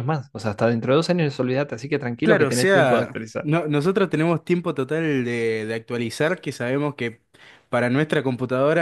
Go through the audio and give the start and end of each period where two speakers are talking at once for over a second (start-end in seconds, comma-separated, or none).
2.2-3.5